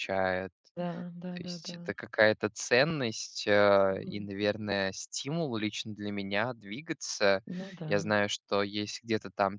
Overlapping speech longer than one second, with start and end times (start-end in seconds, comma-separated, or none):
none